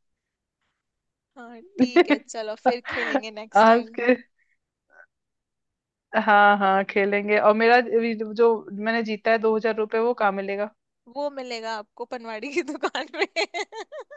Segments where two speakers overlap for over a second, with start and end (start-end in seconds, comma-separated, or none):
none